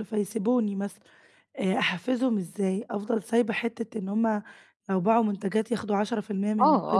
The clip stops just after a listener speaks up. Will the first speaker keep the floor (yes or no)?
no